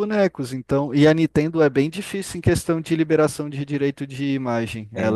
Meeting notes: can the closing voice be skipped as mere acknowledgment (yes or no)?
no